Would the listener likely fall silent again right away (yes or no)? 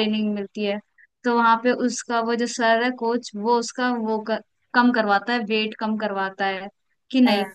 yes